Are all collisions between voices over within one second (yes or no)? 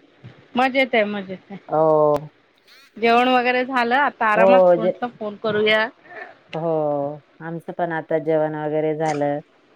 yes